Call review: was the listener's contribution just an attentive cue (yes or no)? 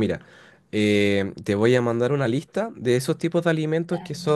yes